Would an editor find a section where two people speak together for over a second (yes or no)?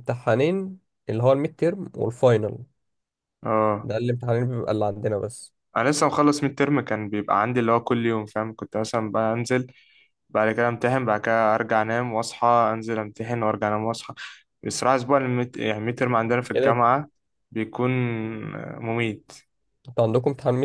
no